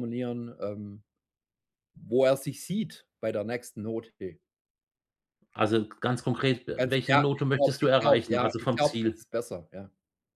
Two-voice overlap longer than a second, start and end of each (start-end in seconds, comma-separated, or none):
6.8-9.2